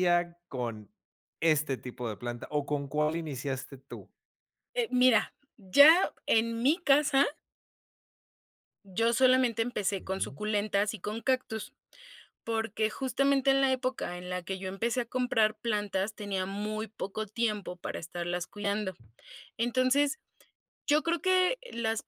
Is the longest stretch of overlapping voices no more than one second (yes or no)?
yes